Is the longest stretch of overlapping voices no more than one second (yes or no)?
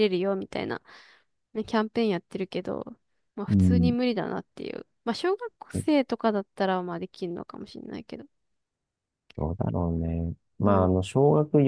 yes